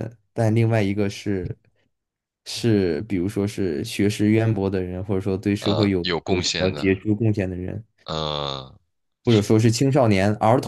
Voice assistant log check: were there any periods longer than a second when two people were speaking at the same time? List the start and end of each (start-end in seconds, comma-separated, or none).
5.6-7.0